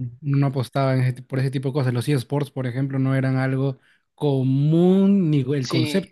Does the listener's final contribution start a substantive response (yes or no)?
yes